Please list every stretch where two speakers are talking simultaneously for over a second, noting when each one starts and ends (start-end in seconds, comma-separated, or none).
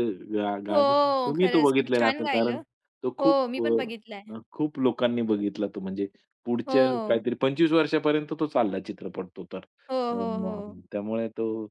0.7-2.6